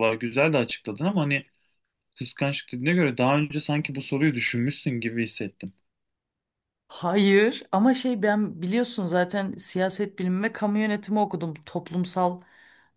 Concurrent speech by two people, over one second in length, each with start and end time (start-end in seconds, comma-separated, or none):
none